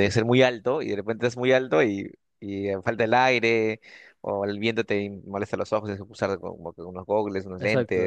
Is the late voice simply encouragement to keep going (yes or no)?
no